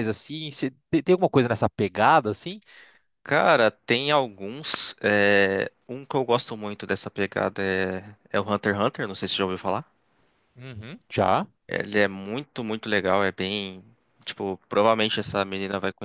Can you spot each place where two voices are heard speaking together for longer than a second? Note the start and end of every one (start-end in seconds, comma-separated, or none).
none